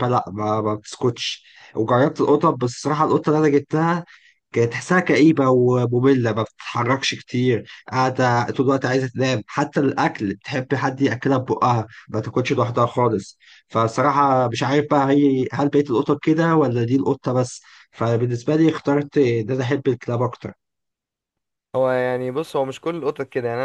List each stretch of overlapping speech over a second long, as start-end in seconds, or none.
none